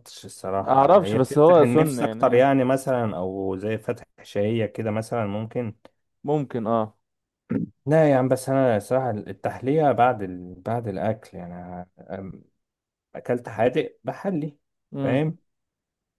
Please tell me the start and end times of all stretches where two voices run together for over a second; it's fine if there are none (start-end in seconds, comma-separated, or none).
0.5-2.4